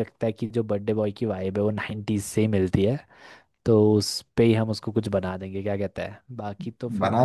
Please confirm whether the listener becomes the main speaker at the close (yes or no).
yes